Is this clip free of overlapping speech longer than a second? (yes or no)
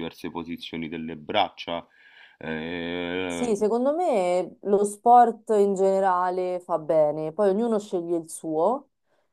yes